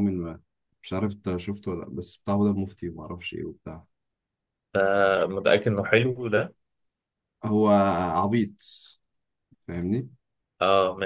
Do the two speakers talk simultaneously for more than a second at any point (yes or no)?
no